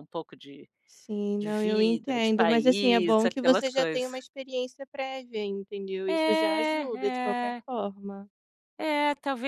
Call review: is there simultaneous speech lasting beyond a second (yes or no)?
yes